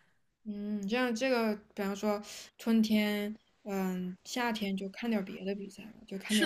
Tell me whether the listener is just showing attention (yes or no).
no